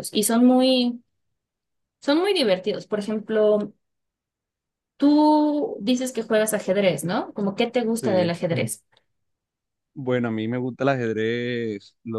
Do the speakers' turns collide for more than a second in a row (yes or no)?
no